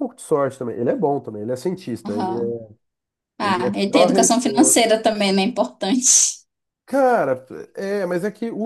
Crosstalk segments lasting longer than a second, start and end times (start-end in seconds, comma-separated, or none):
3.5-4.8